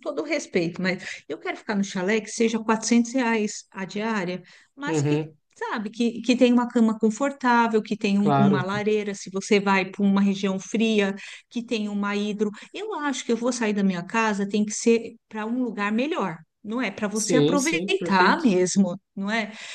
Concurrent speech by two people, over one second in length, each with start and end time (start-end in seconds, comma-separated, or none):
17.1-18.4